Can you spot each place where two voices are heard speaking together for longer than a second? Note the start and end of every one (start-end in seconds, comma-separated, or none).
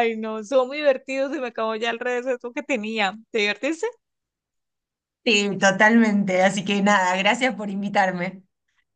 none